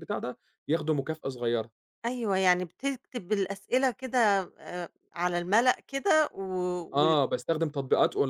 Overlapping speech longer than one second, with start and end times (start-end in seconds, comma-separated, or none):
none